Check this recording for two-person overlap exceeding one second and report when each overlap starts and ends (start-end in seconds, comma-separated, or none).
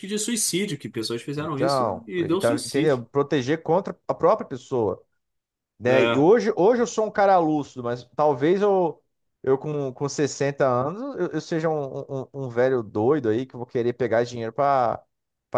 1.4-3.0